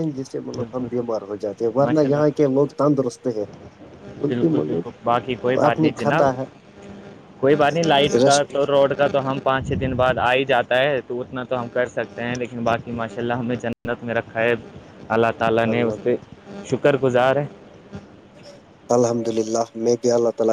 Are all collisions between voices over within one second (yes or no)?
no